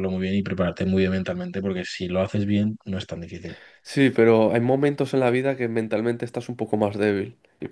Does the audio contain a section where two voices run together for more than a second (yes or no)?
no